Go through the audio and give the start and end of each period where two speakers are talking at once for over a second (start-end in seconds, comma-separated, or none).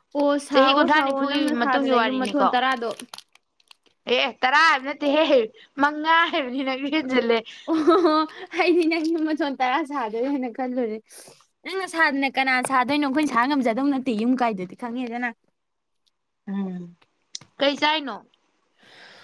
0.5-2.5